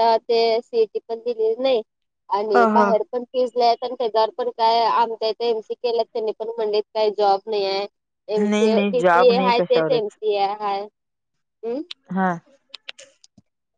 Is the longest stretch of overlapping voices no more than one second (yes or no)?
no